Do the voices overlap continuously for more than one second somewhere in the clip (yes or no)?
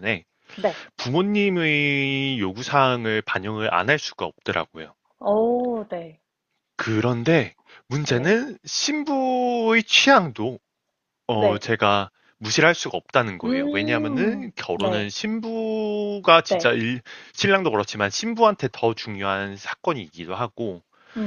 yes